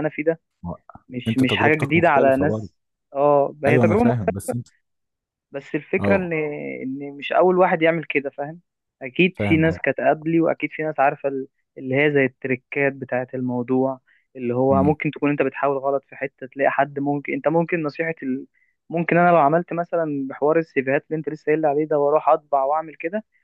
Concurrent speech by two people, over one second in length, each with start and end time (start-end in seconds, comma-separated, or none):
1.3-2.7